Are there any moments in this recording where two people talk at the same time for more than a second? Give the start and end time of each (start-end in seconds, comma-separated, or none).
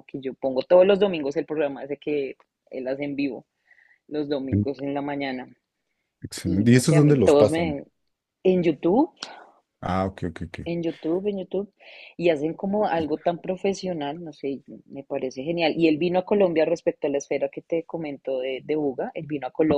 6.5-7.8